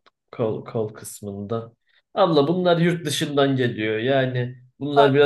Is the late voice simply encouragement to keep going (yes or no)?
yes